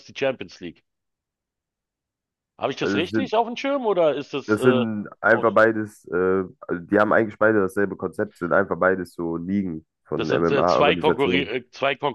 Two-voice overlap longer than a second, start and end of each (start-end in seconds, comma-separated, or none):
10.2-11.5